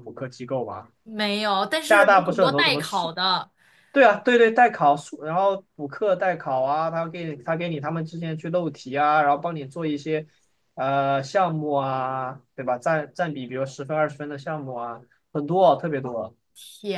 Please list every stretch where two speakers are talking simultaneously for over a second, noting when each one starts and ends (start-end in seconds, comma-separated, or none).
1.8-3.1